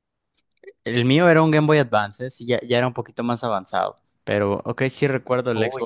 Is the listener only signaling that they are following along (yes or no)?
no